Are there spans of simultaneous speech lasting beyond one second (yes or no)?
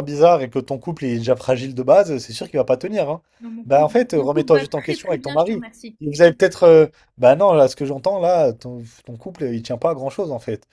yes